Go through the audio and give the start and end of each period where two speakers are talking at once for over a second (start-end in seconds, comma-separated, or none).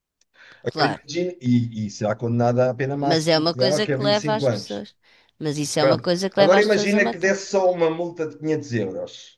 3.0-4.8, 5.8-7.4